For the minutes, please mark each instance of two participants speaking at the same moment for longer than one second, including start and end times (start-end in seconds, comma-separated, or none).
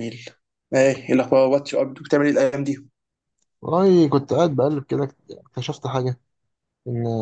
none